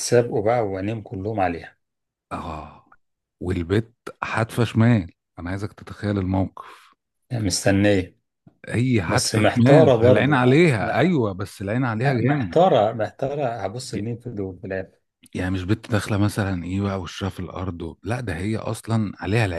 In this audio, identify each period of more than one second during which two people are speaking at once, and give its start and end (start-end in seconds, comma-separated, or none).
9.1-11.2